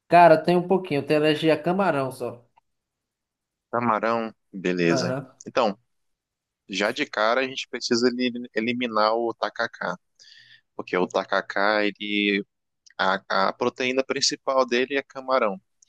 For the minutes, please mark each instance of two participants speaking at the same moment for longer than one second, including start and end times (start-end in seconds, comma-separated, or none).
none